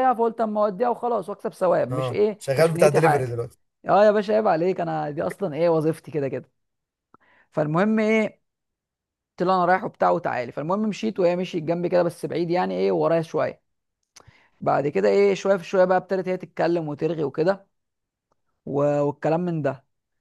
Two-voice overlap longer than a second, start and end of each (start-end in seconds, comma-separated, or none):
1.9-3.4